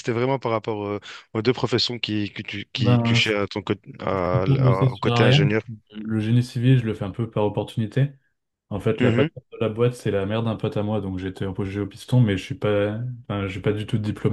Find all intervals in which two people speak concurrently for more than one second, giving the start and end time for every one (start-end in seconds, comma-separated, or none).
4.1-5.5